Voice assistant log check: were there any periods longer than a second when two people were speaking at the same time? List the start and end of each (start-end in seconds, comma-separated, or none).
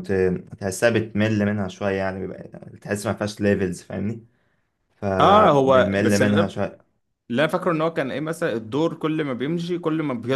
5.2-6.4